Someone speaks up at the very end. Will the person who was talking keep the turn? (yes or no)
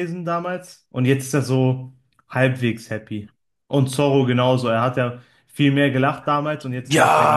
no